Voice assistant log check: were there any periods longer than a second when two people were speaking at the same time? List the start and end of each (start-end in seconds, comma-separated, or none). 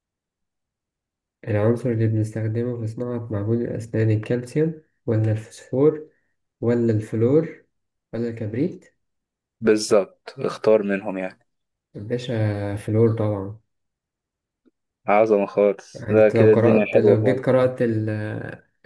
15.9-17.5